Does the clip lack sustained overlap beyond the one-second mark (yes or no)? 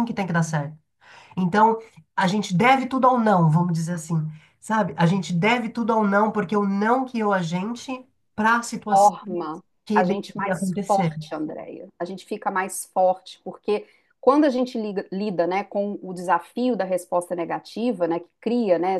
no